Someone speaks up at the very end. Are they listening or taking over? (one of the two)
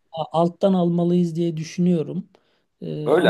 taking over